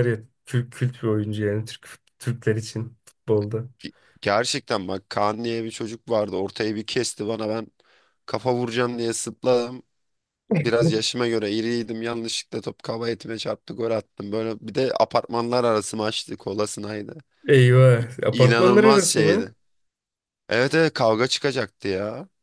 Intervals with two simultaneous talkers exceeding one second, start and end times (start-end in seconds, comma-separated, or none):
18.0-19.5